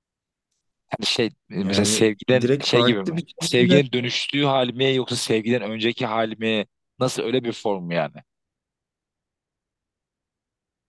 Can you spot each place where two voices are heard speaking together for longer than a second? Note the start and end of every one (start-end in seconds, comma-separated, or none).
1.6-3.8